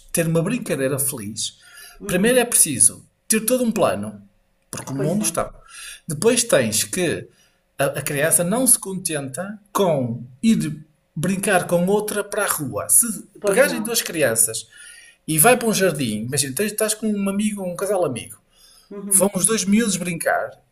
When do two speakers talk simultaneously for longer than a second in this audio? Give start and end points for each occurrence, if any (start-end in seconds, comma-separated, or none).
none